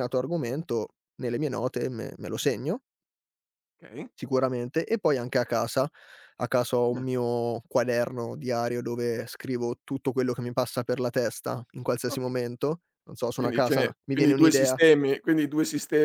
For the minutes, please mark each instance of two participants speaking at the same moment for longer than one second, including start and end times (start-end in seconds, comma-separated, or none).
13.3-14.8